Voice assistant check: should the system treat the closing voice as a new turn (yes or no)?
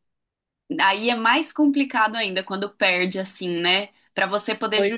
no